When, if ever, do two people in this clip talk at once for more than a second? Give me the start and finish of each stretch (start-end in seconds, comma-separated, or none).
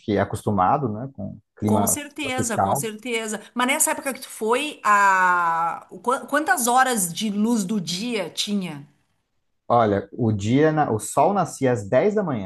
1.6-2.9